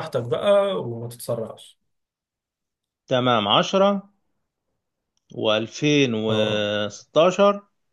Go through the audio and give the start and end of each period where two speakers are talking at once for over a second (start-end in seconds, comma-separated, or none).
none